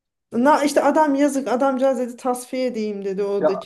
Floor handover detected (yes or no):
no